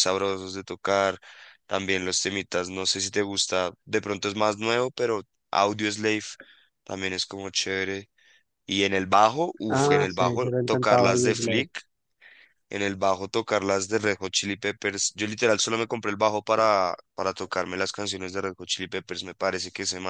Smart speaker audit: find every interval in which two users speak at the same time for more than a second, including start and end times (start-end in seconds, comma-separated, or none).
9.7-11.7